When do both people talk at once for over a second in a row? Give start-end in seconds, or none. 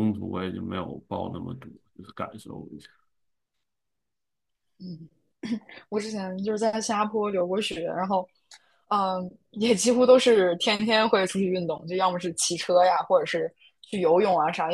none